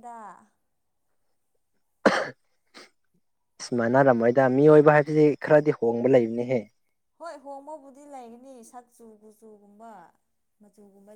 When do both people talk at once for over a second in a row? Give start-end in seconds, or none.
none